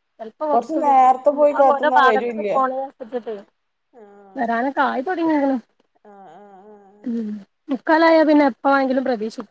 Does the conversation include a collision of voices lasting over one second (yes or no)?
yes